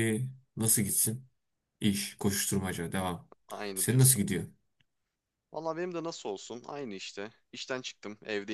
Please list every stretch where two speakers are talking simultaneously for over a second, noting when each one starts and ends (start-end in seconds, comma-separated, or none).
none